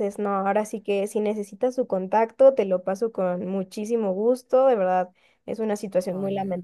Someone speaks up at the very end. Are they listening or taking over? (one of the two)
listening